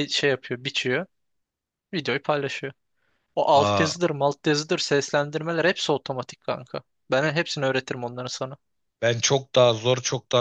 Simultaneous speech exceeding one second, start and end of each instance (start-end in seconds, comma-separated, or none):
none